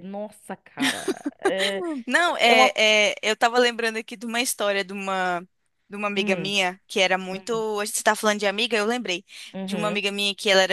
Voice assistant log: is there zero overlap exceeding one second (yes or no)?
yes